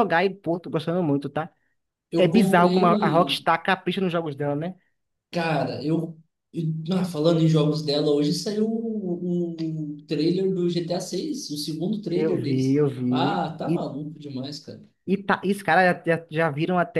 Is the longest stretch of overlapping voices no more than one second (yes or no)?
no